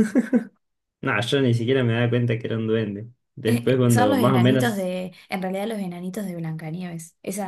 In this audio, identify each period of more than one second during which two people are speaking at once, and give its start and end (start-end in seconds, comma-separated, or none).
3.5-4.9